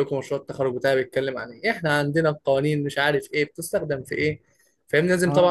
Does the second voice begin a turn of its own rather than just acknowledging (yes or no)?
no